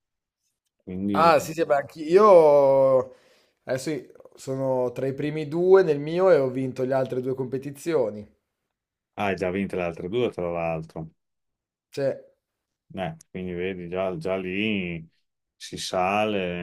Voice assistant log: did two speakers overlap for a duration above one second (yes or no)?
no